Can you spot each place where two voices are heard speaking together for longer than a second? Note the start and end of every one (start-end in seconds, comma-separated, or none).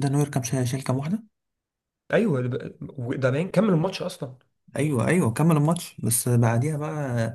none